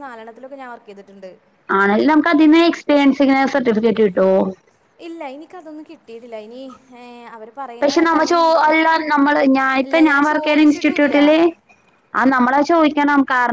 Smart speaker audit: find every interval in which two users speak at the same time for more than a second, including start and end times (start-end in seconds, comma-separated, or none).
9.9-11.1